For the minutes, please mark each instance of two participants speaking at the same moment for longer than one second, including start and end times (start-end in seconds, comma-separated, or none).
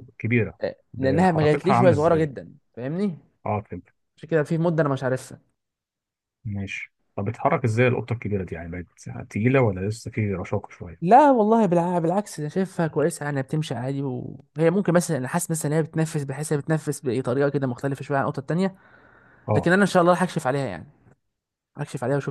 0.6-2.3